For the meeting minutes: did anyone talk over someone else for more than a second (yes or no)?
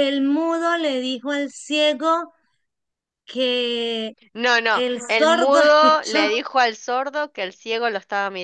yes